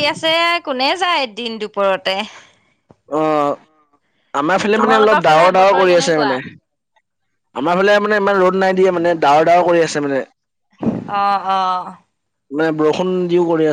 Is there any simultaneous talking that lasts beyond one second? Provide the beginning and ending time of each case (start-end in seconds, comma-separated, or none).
4.8-6.3